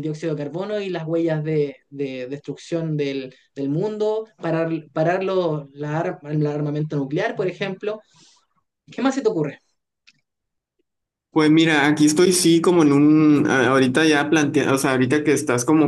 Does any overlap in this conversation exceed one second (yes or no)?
no